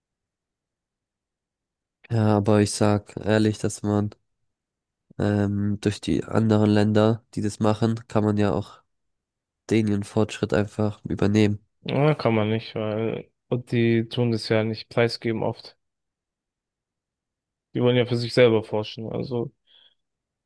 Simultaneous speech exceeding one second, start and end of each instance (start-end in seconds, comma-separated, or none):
none